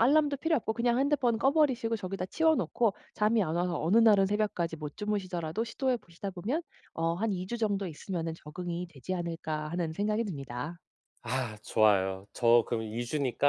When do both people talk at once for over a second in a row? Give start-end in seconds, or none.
none